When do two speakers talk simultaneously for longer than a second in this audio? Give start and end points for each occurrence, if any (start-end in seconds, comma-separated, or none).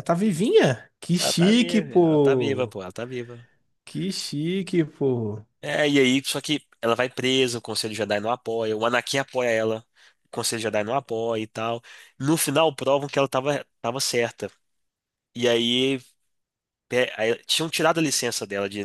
1.2-2.8